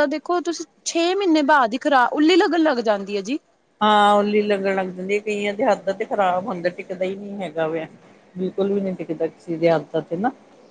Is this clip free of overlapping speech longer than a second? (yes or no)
yes